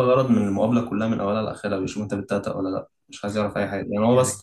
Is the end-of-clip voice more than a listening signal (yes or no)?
no